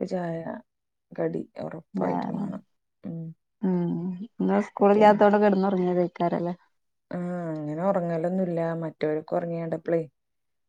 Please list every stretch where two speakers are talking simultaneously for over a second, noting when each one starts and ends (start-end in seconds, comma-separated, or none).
none